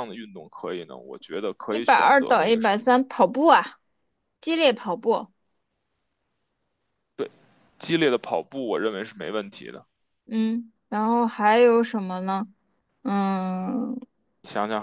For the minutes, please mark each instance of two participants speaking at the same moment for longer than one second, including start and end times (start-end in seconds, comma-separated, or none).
1.6-2.9